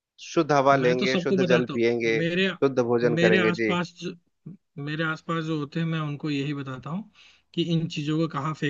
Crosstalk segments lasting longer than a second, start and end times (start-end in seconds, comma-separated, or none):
0.7-2.5